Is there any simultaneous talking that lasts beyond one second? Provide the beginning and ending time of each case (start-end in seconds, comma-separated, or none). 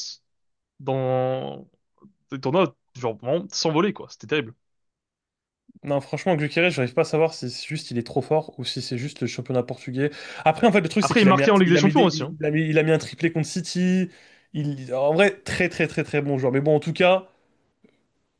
11.0-12.3